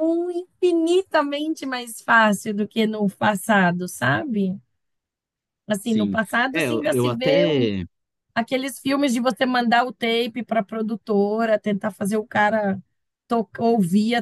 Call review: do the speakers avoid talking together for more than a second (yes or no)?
no